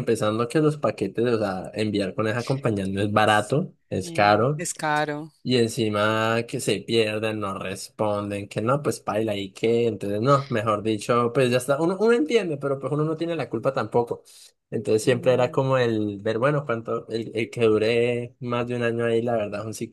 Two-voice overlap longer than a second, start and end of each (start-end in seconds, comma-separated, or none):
3.2-4.6